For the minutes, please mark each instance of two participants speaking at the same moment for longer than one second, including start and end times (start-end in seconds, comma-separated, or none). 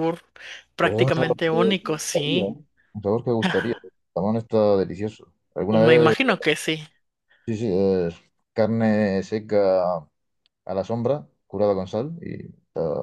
0.8-2.5